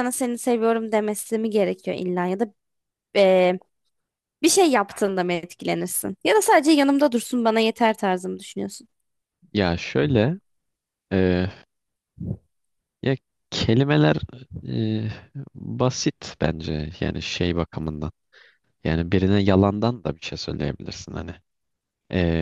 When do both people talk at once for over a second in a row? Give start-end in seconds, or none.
none